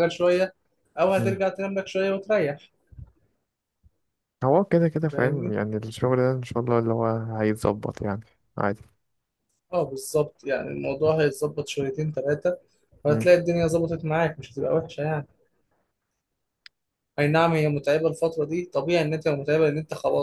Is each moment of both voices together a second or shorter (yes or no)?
yes